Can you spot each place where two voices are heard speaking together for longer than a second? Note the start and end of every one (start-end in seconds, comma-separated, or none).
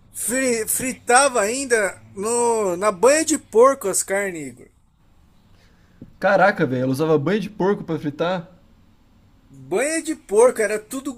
none